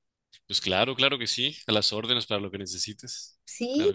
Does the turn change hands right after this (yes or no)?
yes